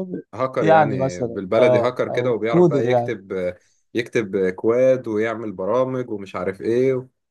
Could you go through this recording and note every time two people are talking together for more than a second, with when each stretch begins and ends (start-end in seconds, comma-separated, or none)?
0.6-3.1